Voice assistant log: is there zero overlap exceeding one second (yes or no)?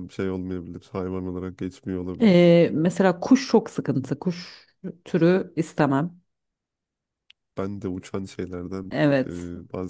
yes